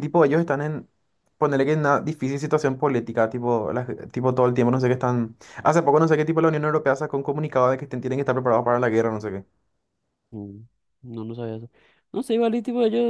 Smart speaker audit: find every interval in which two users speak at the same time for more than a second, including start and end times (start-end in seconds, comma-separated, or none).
none